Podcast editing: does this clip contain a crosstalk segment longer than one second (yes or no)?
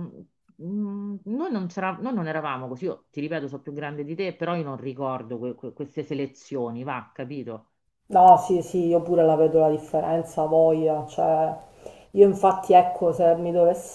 no